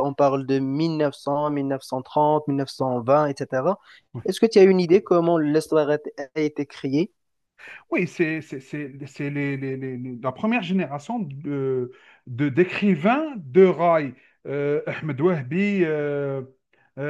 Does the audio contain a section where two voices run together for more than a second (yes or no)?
no